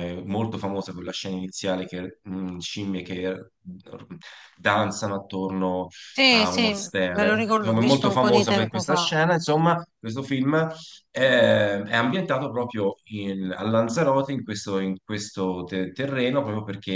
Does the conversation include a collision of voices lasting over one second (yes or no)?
yes